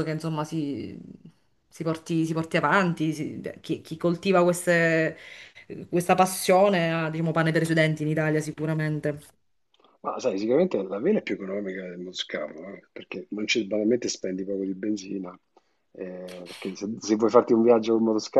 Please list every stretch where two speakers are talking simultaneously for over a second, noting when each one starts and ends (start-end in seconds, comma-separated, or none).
none